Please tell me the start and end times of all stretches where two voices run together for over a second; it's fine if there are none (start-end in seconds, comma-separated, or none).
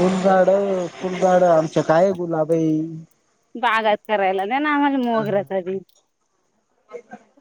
none